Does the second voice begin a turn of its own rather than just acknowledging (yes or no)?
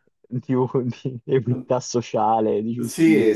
yes